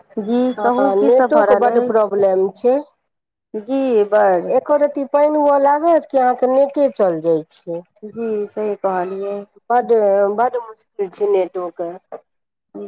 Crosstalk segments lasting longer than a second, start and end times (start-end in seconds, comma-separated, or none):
0.6-2.2